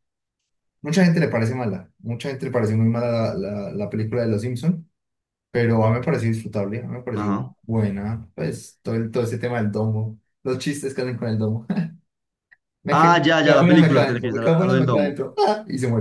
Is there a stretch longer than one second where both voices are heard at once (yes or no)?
yes